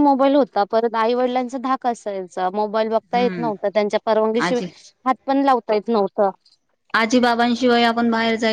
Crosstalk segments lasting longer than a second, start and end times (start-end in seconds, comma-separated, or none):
none